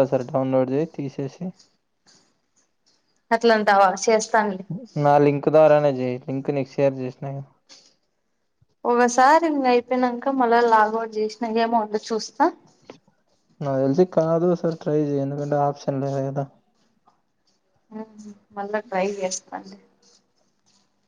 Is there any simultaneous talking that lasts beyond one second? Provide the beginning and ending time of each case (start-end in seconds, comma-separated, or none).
none